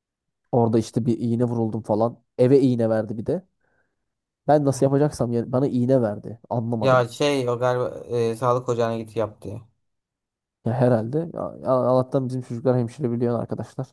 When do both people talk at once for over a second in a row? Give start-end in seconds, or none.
none